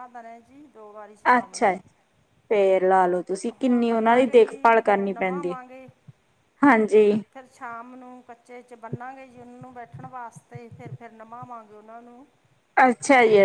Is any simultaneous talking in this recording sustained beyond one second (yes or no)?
yes